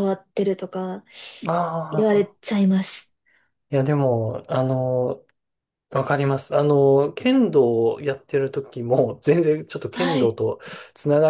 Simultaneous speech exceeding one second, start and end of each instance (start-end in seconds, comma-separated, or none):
none